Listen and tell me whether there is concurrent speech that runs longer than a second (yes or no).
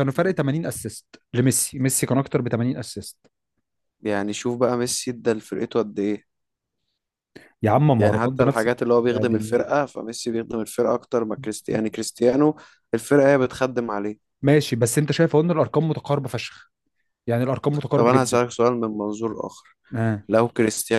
yes